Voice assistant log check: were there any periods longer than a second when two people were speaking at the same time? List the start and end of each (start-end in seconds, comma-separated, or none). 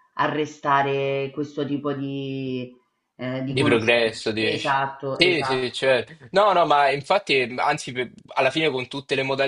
3.4-5.8